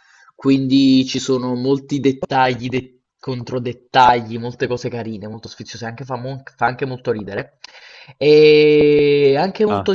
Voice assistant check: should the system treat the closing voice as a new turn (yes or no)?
no